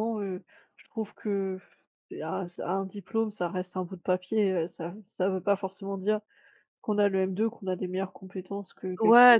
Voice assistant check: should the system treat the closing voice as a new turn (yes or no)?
yes